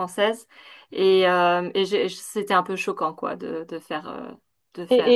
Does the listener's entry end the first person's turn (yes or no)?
yes